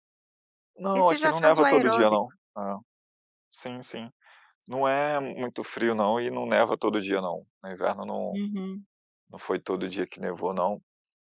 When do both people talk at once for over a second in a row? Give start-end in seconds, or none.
0.8-2.2